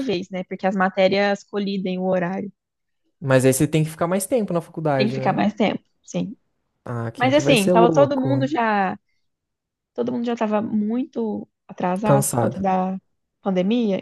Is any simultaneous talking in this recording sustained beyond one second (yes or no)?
yes